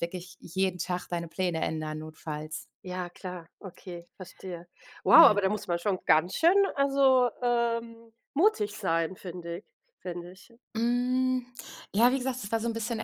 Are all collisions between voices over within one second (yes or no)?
yes